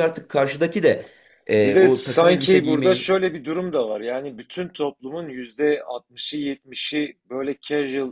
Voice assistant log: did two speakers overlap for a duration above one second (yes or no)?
yes